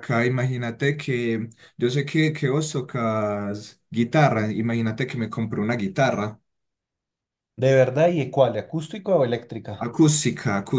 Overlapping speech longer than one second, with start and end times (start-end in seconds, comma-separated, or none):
none